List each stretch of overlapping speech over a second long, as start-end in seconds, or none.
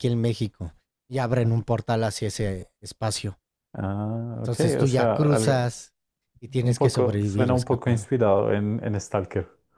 4.3-5.7, 6.6-8.1